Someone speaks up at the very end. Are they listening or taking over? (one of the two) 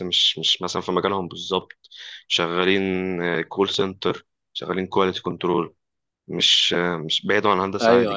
taking over